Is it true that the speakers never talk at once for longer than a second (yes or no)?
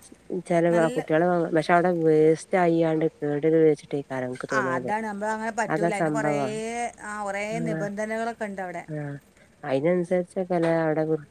yes